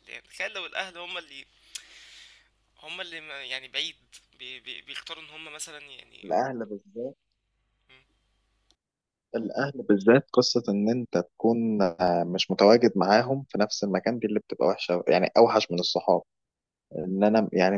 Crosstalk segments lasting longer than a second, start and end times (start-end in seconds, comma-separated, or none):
none